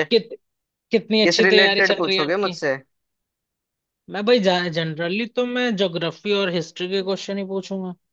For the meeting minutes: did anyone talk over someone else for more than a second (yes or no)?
yes